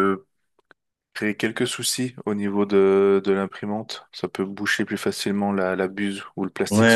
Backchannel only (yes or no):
no